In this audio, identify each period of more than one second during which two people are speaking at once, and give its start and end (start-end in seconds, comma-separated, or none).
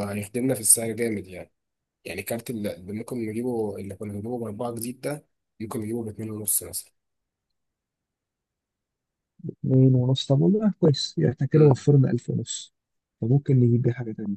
none